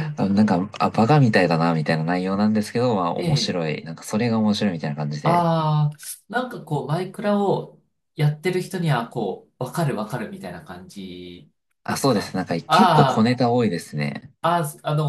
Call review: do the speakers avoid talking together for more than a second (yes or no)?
no